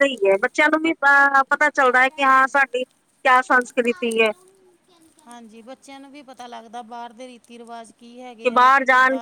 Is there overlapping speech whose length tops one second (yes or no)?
no